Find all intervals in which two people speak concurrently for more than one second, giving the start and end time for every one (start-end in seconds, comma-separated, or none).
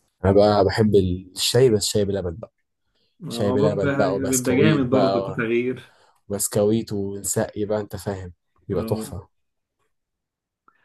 3.3-5.4